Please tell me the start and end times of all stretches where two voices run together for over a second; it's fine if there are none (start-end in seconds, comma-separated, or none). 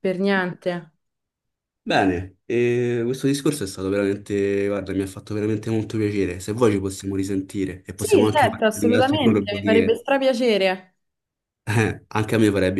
8.0-10.0